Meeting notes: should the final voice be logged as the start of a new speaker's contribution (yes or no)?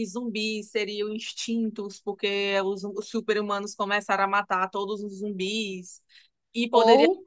no